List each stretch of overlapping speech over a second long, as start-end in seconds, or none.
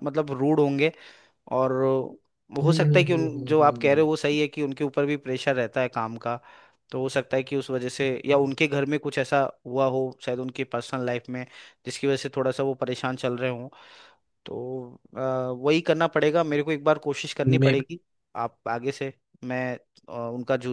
2.6-4.0